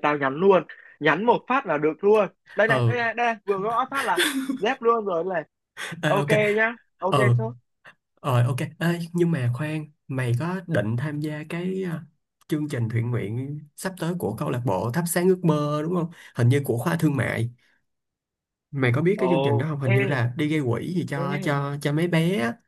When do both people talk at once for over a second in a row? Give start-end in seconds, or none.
none